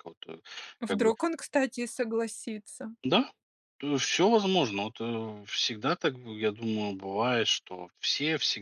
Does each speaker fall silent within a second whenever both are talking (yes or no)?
yes